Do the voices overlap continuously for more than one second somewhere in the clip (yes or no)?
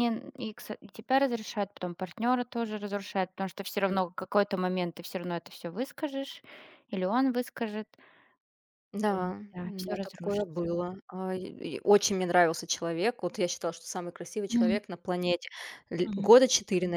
yes